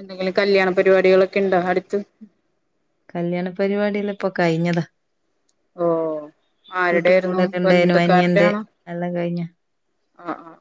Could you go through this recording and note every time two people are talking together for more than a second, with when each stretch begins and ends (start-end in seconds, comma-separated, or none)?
6.9-8.5